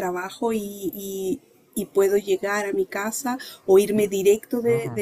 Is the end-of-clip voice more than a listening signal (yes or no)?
no